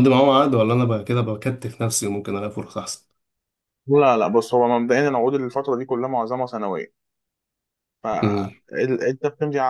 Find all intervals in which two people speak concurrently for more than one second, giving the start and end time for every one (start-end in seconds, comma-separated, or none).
none